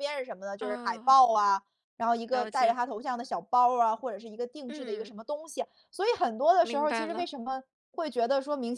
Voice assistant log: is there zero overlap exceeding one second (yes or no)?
yes